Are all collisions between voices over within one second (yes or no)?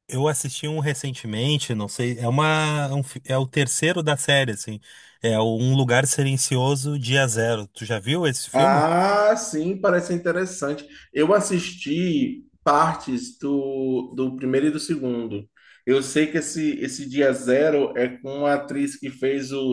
yes